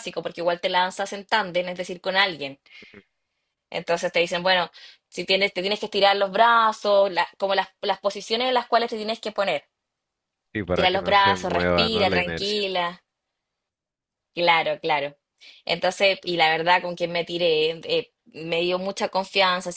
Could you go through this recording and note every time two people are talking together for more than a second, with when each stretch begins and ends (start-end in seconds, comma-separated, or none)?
10.7-12.6